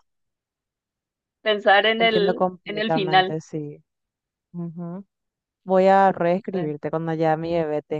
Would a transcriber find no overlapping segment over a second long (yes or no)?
no